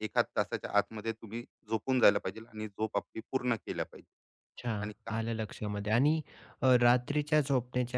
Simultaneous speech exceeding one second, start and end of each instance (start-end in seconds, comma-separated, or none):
none